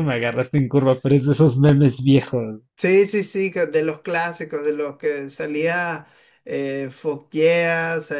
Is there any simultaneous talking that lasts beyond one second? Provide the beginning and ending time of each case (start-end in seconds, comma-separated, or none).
none